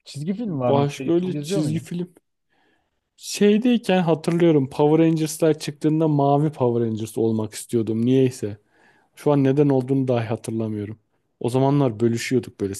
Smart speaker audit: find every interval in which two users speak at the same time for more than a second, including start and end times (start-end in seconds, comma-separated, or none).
0.7-1.9